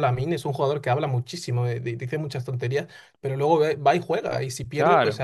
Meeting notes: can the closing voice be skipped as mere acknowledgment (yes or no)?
yes